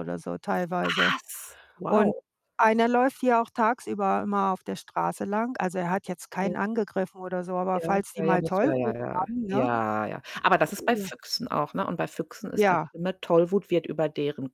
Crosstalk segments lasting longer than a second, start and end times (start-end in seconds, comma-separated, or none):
7.7-9.7